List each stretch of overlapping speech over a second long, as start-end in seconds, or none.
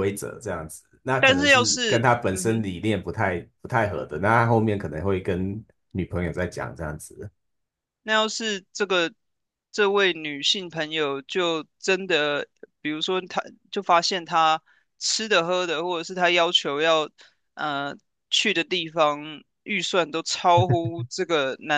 1.2-2.6